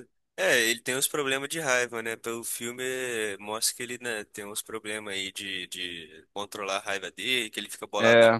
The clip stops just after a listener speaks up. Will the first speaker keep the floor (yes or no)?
yes